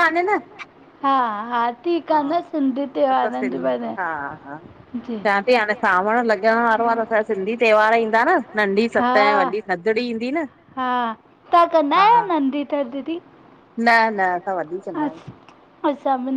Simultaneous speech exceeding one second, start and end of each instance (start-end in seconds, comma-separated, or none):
none